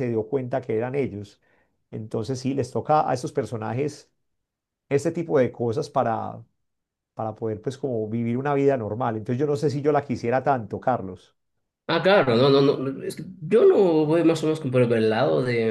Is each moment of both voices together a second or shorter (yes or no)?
yes